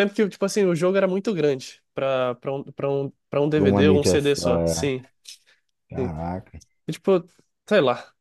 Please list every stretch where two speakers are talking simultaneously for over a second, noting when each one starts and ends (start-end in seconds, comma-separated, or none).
3.5-4.9